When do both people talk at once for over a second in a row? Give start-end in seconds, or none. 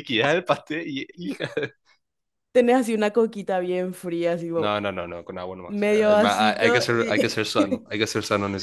5.7-7.5